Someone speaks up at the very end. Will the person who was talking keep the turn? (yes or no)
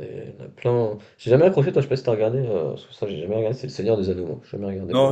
no